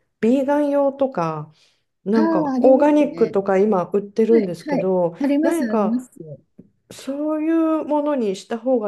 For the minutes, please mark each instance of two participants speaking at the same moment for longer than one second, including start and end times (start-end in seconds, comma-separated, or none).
2.1-3.4, 4.3-6.1